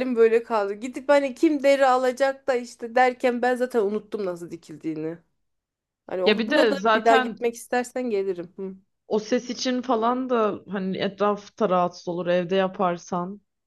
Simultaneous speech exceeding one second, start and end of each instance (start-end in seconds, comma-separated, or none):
6.2-7.5